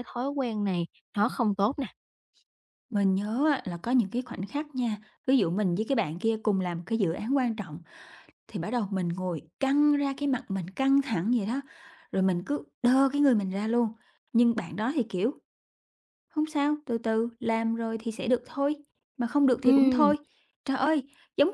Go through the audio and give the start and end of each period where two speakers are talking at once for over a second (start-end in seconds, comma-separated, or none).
none